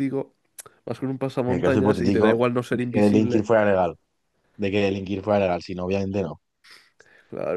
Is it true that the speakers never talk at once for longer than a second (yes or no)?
no